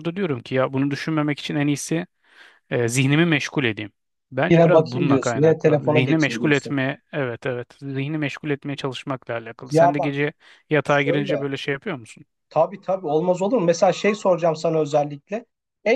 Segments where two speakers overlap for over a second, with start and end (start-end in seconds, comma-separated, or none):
4.5-6.8